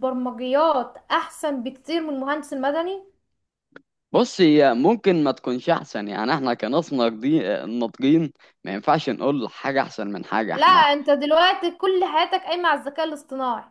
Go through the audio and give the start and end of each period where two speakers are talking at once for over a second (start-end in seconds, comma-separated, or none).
none